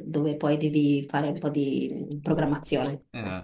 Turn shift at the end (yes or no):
yes